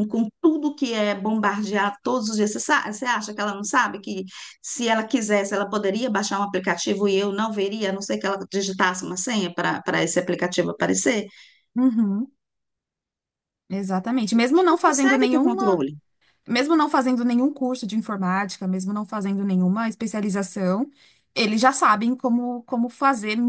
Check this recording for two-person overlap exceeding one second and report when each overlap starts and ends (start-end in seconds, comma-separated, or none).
14.4-15.8